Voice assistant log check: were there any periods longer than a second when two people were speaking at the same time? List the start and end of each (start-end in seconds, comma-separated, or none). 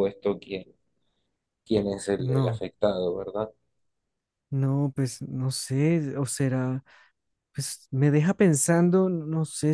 none